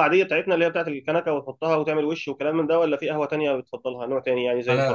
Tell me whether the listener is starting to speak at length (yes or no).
yes